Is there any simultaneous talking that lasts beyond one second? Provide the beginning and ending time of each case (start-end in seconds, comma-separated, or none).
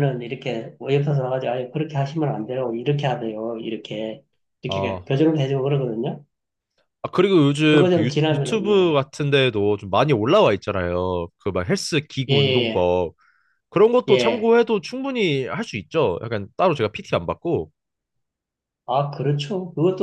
7.7-9.0